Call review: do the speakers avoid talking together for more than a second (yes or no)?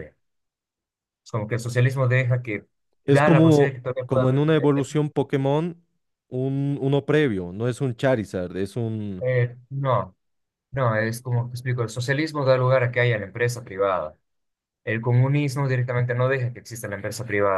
no